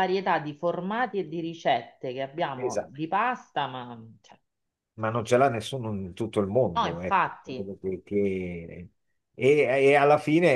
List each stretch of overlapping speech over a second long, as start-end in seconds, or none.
none